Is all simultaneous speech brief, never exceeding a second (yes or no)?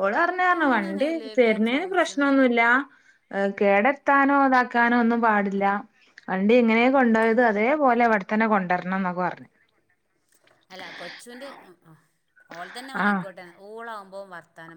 no